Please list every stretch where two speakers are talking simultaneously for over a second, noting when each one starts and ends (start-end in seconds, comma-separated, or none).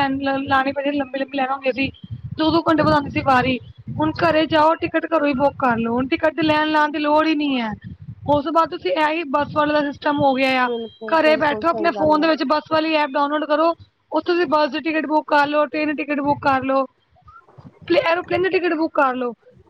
10.7-12.3